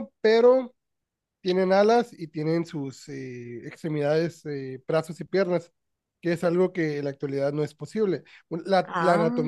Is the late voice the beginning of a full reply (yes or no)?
no